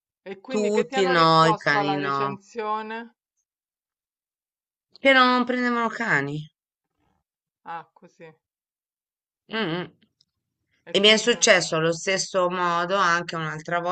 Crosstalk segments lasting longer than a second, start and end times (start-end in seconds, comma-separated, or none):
0.5-2.2